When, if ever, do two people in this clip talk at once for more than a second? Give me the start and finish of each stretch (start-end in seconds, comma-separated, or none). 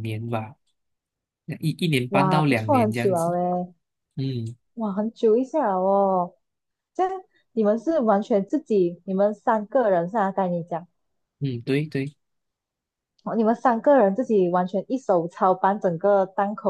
2.1-3.3